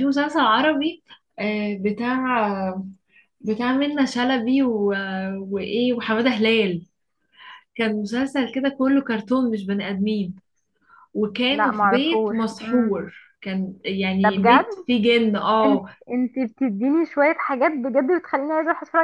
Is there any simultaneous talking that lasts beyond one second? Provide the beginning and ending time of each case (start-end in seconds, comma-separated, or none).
11.5-13.0